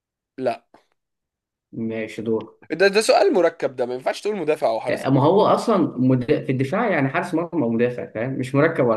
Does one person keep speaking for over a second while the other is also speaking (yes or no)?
no